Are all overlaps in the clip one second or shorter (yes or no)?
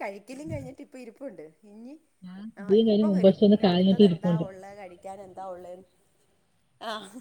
no